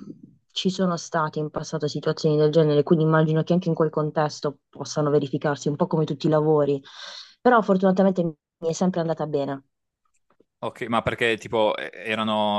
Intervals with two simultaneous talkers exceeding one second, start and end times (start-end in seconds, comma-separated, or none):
none